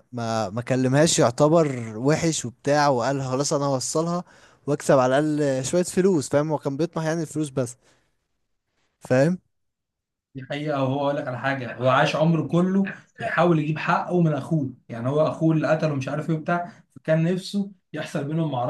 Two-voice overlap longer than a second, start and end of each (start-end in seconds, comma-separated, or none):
none